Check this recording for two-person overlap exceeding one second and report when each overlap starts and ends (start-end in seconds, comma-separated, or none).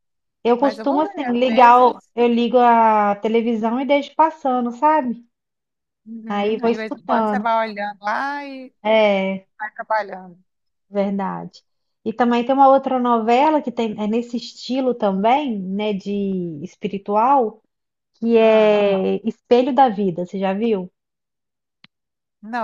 0.6-2.1, 6.3-7.5